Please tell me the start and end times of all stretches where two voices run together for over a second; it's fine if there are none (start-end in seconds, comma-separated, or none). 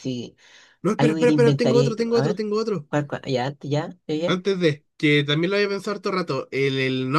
1.0-2.4